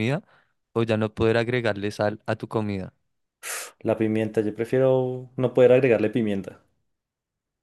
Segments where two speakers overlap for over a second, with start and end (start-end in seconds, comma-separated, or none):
none